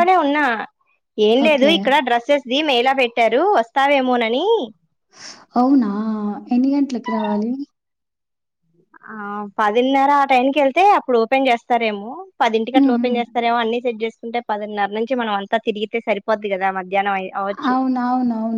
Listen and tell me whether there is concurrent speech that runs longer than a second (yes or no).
no